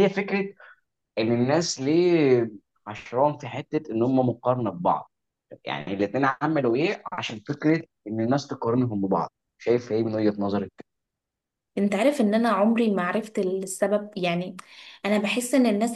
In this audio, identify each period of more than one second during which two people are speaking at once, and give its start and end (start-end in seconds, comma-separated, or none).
none